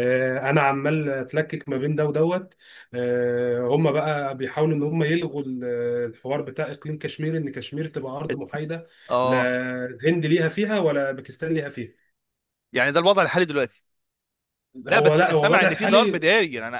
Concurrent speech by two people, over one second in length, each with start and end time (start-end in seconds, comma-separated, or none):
14.9-16.3